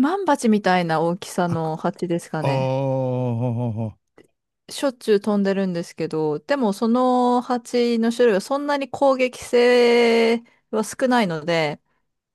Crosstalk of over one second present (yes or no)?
no